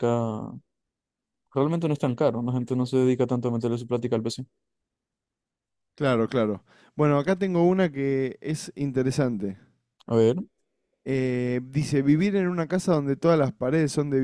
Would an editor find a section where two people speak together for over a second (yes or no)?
no